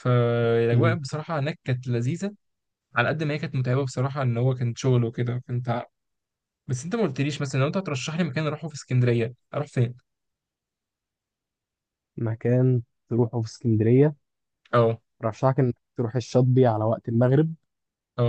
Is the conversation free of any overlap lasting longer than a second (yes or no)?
yes